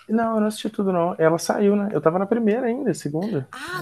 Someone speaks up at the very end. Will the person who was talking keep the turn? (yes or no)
no